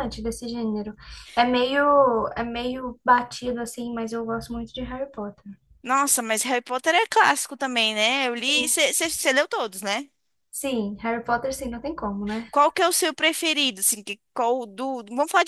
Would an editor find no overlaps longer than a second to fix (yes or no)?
yes